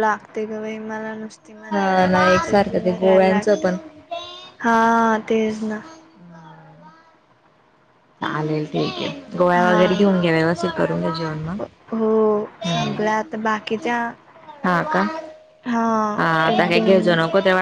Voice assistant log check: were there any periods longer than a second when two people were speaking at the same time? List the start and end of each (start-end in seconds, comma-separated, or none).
1.7-3.7